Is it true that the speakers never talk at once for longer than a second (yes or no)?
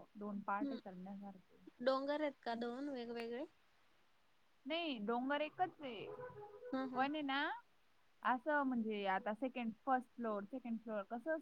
yes